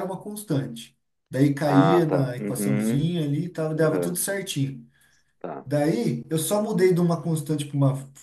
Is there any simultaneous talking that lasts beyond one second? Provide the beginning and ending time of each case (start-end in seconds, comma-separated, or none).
1.6-3.1